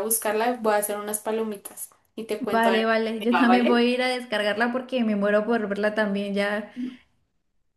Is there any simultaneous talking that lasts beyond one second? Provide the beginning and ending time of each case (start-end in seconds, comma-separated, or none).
2.4-3.8